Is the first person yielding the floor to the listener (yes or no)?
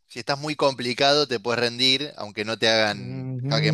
yes